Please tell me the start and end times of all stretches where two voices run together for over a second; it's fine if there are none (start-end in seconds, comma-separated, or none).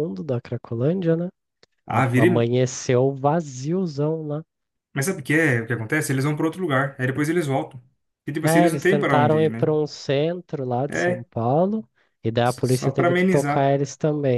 8.4-9.7, 12.4-13.7